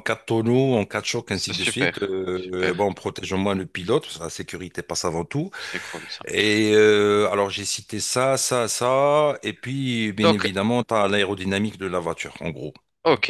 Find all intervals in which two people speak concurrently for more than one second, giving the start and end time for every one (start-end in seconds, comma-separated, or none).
1.3-2.9